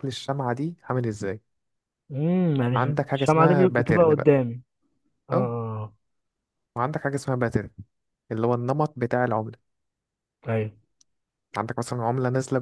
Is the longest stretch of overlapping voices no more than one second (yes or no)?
no